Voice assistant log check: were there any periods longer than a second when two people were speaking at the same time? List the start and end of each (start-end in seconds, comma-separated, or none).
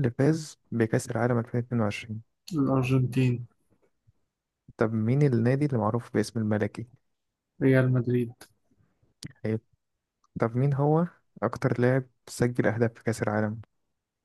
none